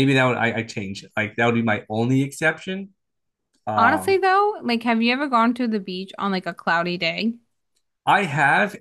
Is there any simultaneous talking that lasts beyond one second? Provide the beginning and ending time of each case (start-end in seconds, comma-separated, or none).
none